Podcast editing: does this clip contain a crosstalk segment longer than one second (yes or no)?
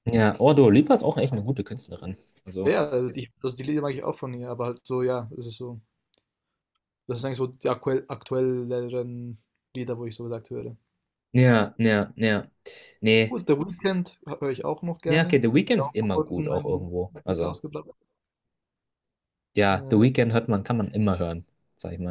yes